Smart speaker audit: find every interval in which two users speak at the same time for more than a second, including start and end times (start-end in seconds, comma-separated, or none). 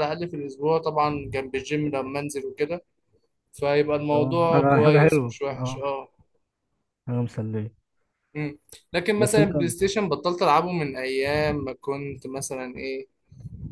4.1-5.8